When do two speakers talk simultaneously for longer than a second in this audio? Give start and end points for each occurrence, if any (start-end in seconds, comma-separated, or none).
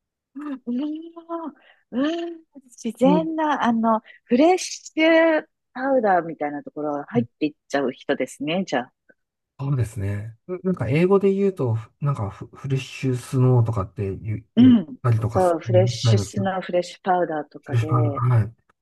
14.6-16.5